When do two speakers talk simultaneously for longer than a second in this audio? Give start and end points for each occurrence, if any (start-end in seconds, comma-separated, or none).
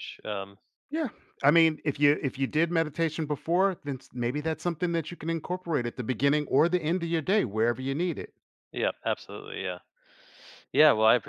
none